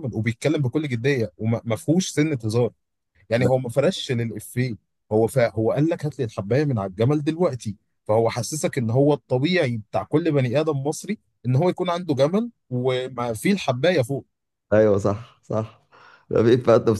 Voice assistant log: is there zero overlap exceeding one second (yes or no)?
yes